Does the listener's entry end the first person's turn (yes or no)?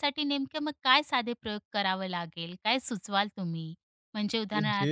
no